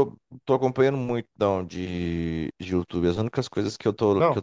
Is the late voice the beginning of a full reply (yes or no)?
no